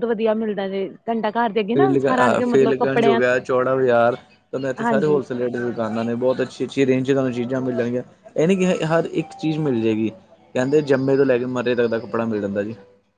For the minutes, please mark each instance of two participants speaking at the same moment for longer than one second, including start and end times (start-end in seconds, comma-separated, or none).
1.7-3.2